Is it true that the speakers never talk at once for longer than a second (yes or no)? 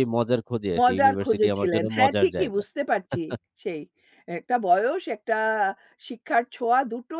no